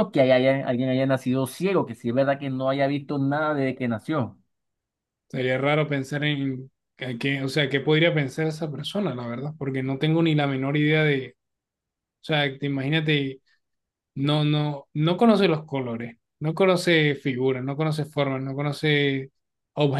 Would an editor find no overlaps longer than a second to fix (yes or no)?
yes